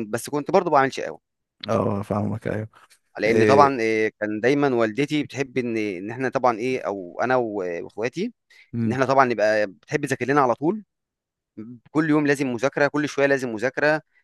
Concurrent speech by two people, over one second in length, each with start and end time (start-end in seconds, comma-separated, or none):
none